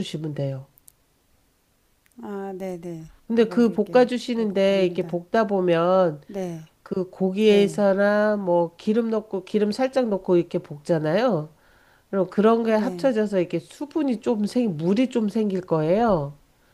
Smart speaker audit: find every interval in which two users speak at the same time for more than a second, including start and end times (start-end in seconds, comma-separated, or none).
3.3-5.2